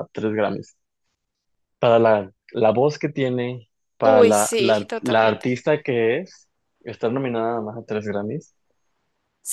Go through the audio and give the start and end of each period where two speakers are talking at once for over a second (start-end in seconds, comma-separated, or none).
4.0-5.5